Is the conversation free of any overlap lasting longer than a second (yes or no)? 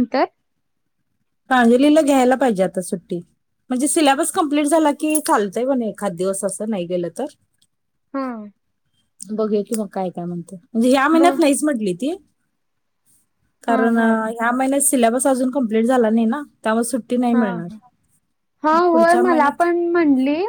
yes